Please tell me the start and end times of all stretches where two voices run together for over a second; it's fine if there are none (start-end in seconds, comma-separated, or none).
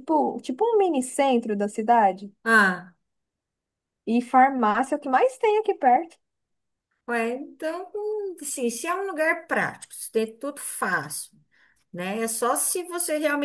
none